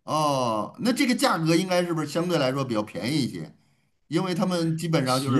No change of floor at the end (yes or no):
yes